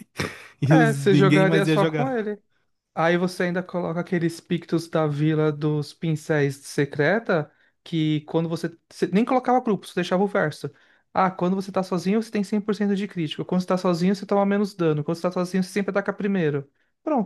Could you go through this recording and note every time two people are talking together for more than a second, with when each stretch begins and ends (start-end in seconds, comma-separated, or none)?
0.7-2.3